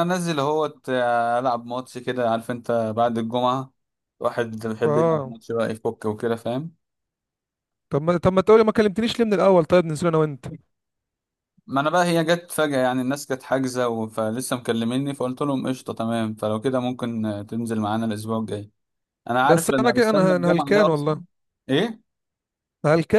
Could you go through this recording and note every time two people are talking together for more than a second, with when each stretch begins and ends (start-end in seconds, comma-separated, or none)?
19.4-21.1